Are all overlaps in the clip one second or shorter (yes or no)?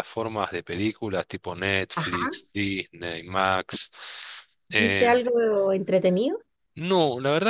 yes